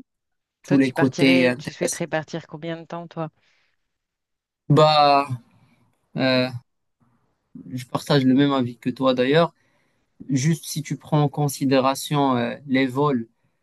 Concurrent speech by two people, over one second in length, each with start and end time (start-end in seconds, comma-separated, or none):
0.7-2.0